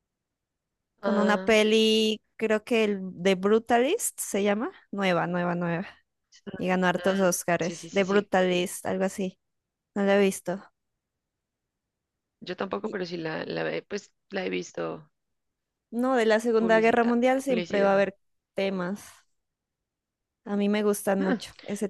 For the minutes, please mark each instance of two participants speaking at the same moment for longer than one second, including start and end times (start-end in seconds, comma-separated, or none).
6.9-8.3, 16.6-18.1